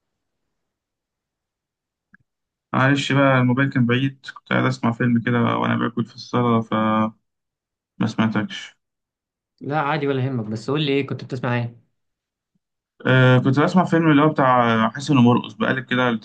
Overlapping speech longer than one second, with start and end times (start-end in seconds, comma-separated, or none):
none